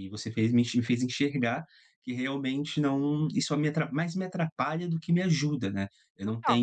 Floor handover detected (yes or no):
no